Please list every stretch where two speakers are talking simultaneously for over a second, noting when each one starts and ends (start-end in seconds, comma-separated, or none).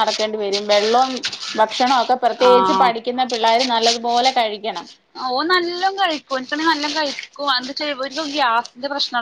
none